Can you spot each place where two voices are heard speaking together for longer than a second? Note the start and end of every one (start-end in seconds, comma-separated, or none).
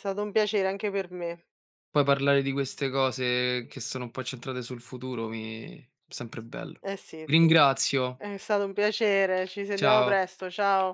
none